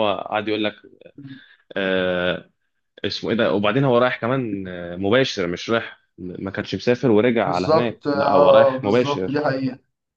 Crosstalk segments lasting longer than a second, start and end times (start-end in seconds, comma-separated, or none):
7.4-9.5